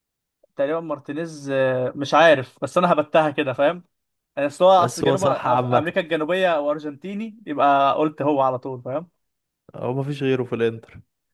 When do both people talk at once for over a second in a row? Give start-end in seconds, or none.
4.8-6.0